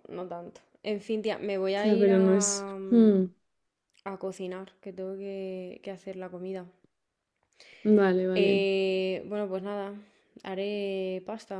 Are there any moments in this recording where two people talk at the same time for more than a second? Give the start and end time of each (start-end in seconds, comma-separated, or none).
1.8-3.1